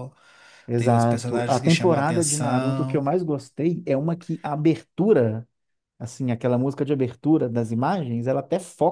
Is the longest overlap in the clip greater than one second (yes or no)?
yes